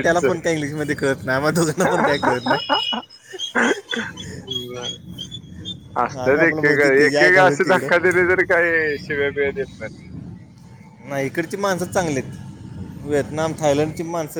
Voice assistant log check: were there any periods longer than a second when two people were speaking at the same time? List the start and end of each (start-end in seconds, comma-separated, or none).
6.2-8.1